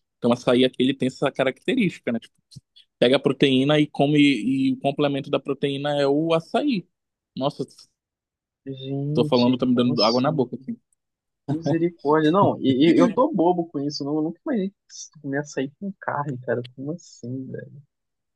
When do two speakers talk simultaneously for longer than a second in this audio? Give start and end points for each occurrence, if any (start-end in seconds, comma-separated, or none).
9.1-10.4